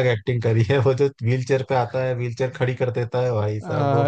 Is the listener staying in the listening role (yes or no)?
no